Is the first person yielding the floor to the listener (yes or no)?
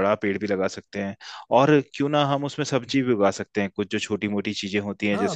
yes